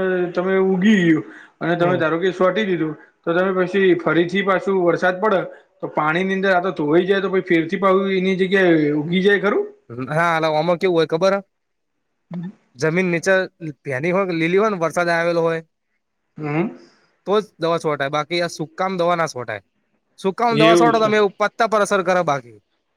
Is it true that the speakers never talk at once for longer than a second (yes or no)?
yes